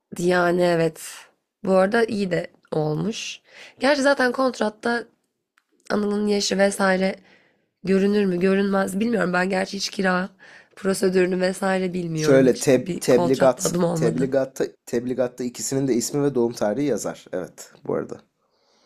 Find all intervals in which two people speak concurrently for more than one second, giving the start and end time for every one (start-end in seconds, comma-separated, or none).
12.2-14.3